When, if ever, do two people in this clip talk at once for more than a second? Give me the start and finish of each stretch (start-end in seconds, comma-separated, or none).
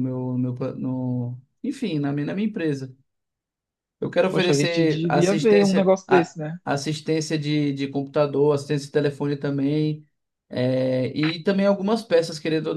4.3-6.6